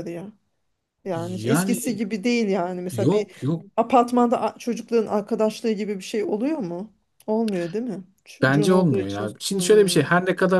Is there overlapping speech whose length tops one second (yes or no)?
yes